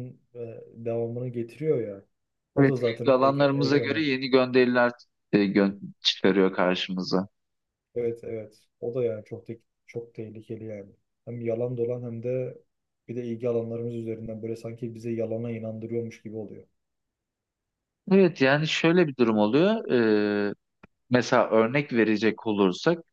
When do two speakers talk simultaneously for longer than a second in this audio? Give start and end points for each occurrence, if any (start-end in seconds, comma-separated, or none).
2.6-4.0